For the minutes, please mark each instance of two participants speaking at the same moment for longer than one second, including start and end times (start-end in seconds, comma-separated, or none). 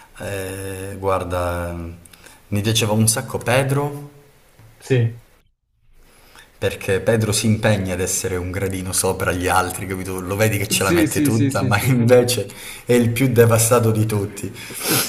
10.7-12.1